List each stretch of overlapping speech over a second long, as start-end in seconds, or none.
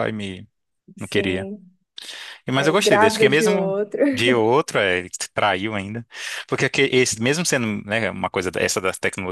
2.5-3.8